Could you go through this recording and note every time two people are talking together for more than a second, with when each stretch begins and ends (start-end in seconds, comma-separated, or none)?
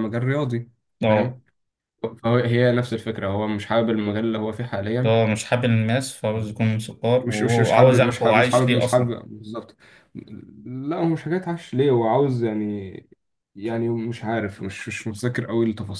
7.2-9.2